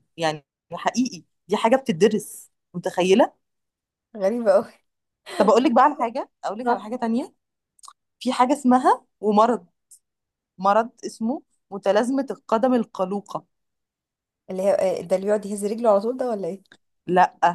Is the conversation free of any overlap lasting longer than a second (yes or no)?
yes